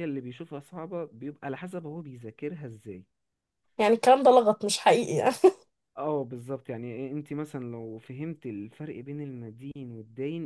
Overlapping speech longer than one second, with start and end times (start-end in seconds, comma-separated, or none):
none